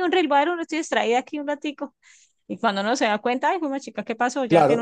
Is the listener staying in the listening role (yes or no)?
no